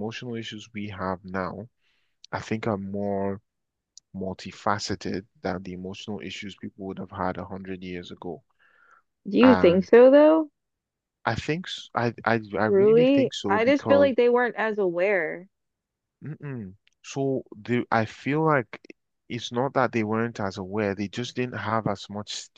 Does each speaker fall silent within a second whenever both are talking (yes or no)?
no